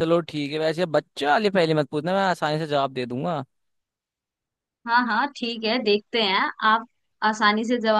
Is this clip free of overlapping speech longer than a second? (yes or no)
yes